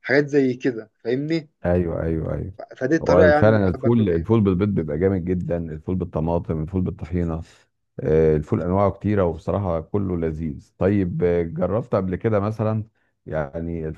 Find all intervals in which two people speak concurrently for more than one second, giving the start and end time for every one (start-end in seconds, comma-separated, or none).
3.0-4.3